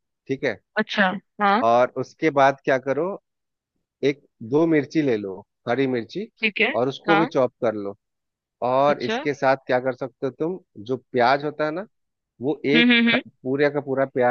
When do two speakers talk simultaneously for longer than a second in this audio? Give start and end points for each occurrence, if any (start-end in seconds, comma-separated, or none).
none